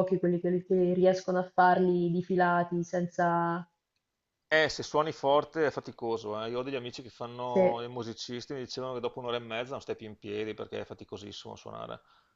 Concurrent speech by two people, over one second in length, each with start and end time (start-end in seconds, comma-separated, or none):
none